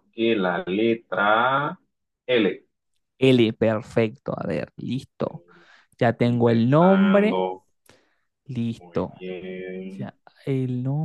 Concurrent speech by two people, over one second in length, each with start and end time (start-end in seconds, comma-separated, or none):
6.2-7.4